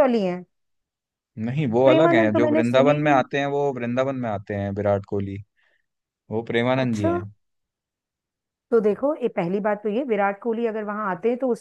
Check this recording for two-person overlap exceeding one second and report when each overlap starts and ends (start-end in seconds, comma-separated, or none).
1.8-3.2